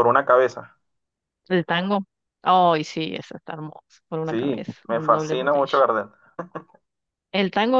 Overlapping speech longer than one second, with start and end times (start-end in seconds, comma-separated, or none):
4.2-5.8